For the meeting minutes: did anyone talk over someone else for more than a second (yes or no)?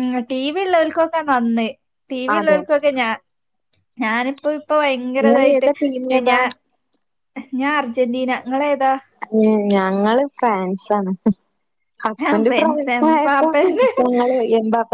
yes